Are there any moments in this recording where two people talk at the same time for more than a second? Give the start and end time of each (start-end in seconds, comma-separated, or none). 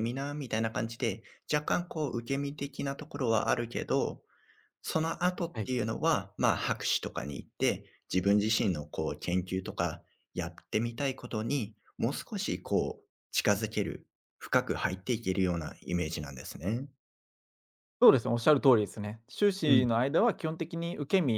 none